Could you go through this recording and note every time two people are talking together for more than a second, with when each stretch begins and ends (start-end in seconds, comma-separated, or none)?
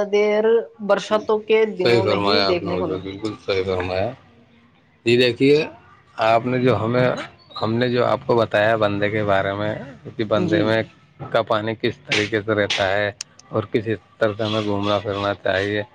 1.8-3.3